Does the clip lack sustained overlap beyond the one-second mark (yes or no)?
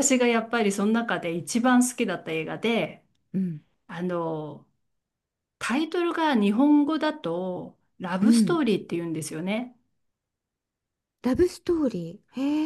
yes